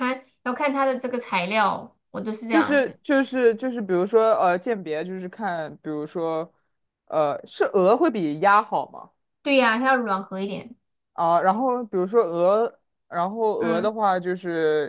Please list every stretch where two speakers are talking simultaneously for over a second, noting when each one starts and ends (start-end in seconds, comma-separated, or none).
none